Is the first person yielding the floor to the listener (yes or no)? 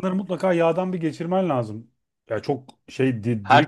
no